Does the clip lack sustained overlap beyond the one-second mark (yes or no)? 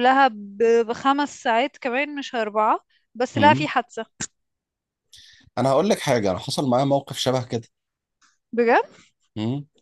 yes